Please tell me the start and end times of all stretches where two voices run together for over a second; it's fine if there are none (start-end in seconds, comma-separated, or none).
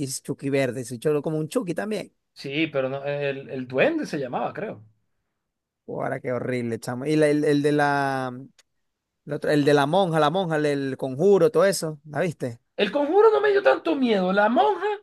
none